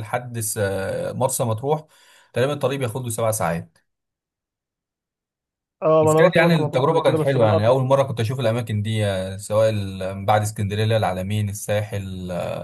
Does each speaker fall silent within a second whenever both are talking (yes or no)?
no